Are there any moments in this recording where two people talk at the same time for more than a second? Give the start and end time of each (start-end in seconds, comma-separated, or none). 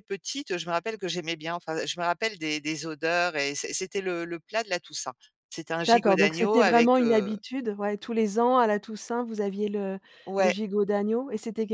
5.8-7.3